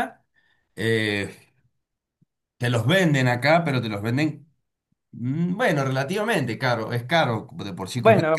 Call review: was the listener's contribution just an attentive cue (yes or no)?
no